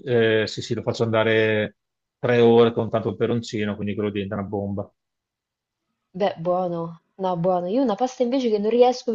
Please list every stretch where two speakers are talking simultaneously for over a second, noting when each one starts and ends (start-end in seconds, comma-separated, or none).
none